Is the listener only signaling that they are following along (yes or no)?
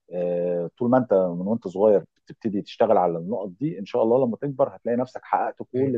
yes